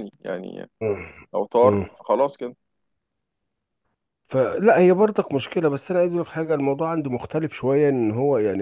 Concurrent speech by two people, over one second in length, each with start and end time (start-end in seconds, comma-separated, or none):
none